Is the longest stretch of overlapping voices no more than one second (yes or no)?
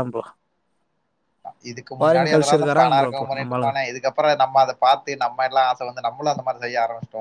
no